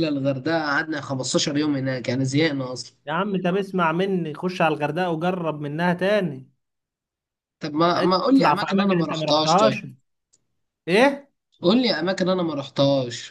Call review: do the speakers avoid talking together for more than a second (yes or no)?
no